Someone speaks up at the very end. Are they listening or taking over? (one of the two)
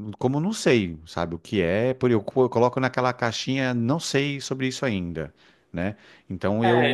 taking over